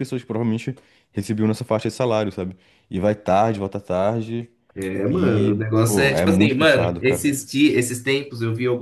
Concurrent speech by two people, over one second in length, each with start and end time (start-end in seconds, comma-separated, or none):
5.1-7.2